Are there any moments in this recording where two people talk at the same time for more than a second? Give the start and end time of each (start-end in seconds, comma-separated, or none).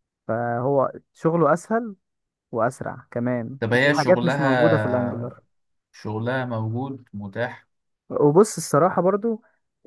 3.6-5.3